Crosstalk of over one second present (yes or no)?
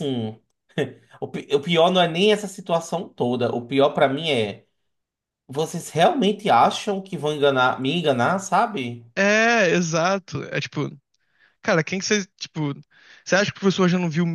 no